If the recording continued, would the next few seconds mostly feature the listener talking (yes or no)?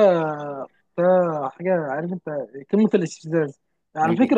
no